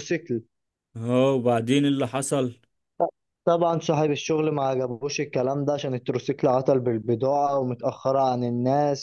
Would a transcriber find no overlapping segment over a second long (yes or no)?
yes